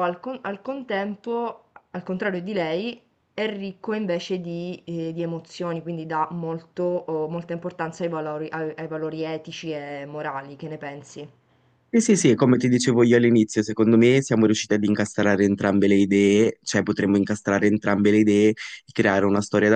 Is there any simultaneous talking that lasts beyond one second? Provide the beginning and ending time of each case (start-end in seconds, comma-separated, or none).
none